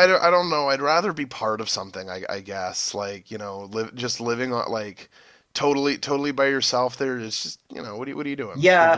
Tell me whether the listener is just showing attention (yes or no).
no